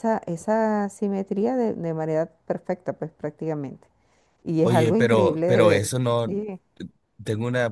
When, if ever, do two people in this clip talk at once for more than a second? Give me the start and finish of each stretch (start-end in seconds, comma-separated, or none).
4.6-6.4